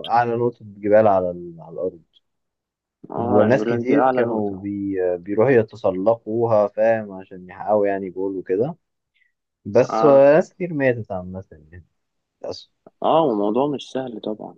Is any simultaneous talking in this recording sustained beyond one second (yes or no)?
yes